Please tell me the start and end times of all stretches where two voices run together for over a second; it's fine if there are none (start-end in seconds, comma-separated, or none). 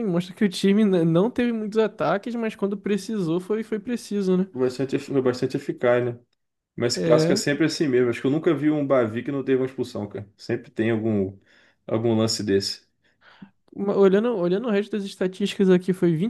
none